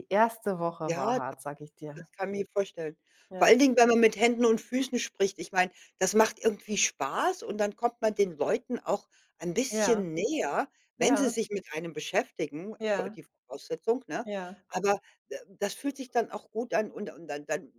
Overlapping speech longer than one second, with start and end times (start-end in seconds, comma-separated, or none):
none